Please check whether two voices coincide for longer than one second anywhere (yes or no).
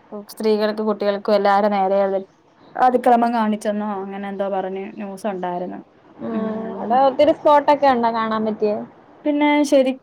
no